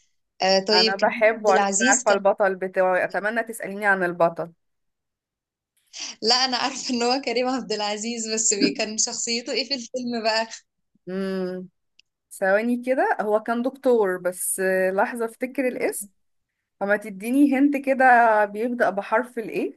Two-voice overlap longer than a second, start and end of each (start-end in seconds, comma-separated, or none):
0.7-2.2